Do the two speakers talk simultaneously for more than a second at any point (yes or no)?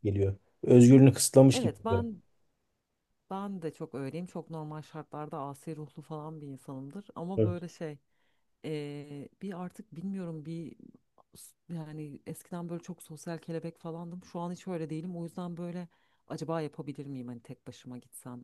no